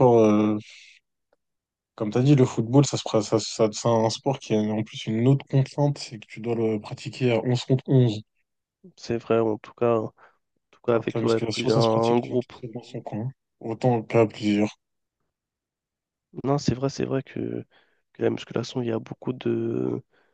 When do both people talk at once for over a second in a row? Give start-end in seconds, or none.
10.9-12.5